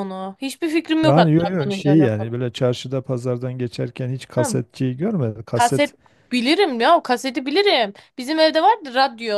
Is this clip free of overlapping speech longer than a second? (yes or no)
no